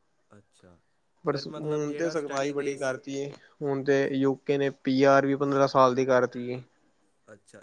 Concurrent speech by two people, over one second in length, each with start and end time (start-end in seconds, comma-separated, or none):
1.3-2.9